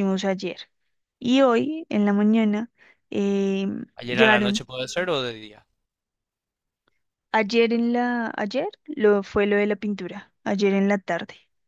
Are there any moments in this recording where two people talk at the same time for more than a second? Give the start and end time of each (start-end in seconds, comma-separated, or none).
none